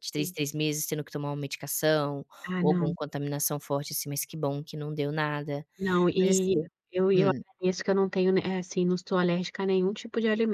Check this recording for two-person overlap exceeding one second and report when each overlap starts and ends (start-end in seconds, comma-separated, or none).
none